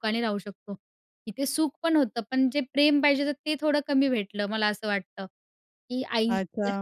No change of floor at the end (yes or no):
no